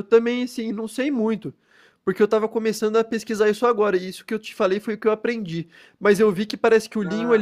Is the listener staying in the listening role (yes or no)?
yes